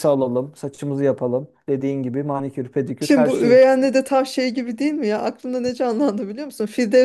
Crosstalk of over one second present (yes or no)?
no